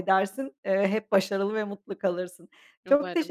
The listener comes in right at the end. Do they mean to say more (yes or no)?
no